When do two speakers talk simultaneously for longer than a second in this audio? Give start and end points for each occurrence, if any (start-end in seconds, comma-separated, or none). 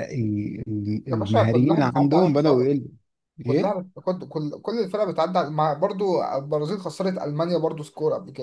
1.1-2.6